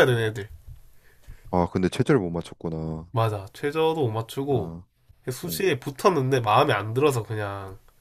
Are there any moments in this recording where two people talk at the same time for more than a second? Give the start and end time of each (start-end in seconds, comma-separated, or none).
none